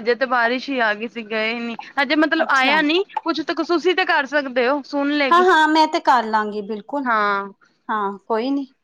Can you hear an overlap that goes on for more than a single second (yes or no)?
no